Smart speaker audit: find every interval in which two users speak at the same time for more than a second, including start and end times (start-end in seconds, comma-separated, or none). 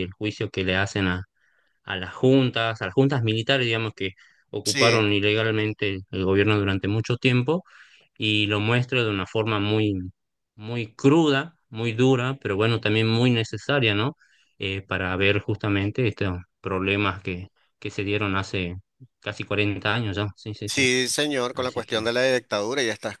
none